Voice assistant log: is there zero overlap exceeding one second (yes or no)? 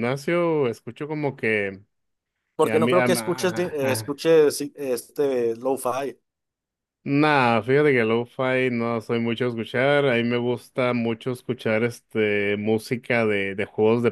no